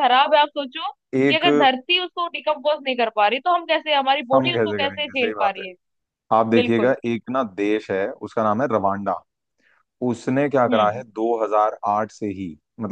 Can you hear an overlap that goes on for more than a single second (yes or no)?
yes